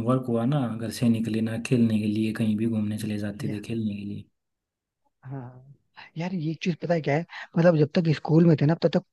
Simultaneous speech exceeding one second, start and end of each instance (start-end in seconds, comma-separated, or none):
none